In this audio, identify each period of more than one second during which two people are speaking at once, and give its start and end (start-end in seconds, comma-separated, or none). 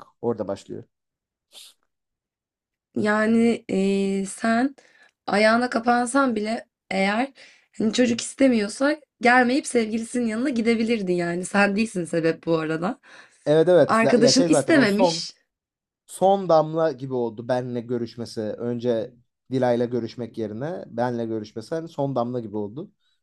13.9-15.3